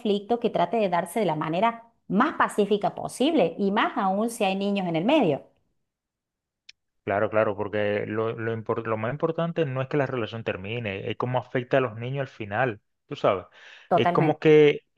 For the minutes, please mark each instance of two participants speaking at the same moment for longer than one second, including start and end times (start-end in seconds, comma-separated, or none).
none